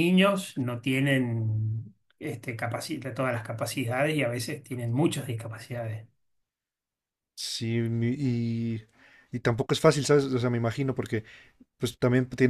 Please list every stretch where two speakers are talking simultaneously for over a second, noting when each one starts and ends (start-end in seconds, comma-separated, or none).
none